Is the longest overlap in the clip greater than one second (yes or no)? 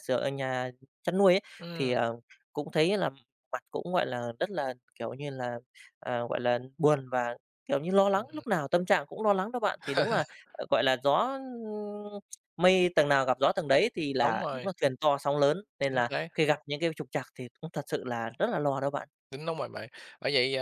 no